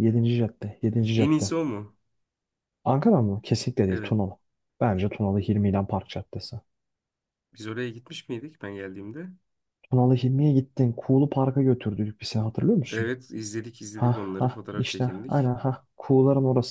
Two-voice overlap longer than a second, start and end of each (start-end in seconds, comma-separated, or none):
13.9-15.5